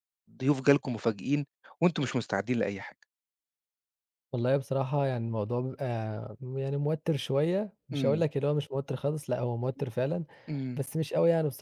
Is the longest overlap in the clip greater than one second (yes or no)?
no